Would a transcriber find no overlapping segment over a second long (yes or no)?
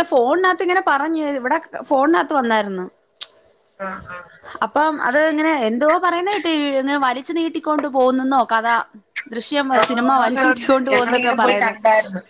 no